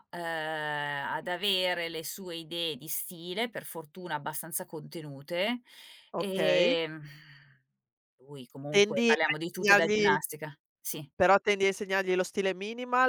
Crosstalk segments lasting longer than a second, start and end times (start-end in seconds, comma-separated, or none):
8.7-10.2